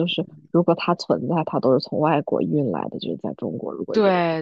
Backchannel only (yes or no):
no